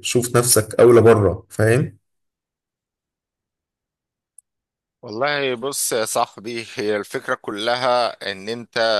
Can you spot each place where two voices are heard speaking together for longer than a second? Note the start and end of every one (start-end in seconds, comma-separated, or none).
none